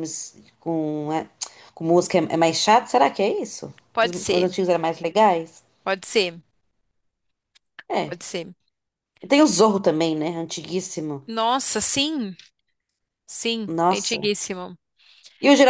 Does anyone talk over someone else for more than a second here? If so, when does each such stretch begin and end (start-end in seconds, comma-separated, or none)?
none